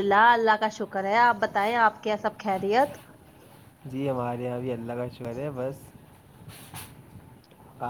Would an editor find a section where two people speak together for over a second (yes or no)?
no